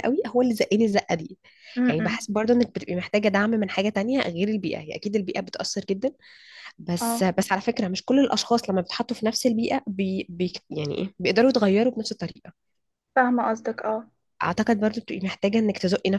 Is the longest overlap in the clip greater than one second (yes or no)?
no